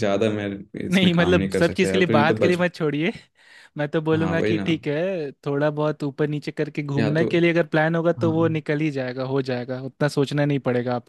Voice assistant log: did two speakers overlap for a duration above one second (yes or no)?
yes